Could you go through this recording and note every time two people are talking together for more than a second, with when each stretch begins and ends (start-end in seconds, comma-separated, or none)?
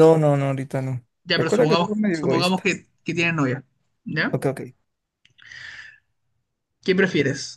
1.2-2.7